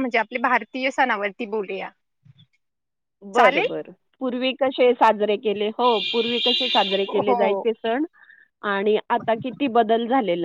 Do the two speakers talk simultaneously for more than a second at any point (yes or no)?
no